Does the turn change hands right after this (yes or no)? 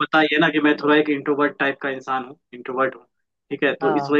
no